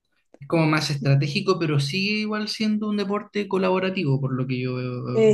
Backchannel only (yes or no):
no